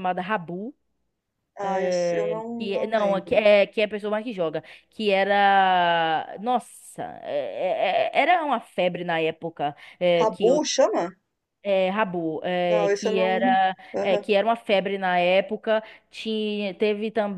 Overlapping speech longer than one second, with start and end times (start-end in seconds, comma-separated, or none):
1.6-3.5, 12.7-14.2